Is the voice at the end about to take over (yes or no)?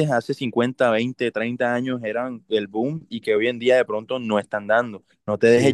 no